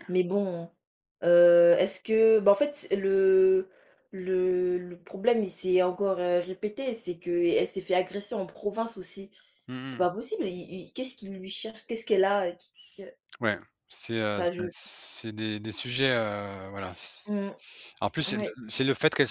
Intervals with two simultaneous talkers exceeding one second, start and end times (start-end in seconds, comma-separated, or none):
none